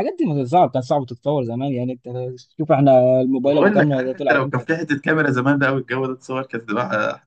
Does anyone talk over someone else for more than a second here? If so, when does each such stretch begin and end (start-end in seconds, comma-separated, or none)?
3.4-4.7